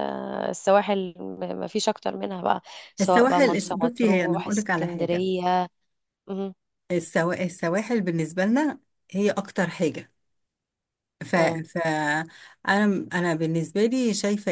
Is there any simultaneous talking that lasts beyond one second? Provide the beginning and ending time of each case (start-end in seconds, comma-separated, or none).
3.0-5.3